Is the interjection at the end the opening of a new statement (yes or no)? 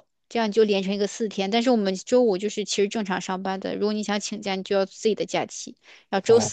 no